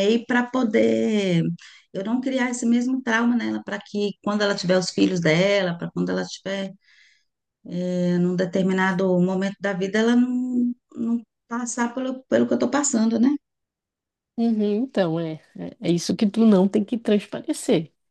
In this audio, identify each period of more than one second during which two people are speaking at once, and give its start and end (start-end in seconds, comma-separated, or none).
none